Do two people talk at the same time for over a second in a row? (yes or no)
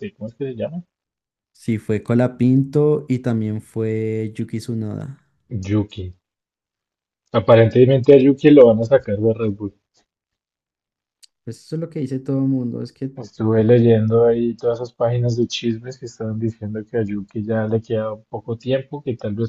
no